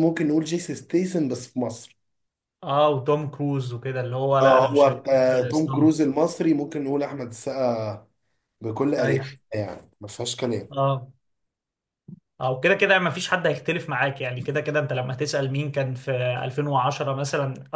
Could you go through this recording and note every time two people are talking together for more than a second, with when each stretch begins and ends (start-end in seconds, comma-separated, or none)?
4.4-6.0